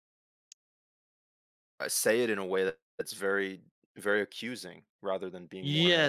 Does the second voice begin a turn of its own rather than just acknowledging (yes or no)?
yes